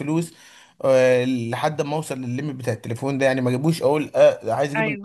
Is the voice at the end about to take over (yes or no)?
no